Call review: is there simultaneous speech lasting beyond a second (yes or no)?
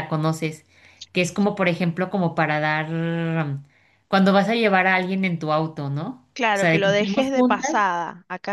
yes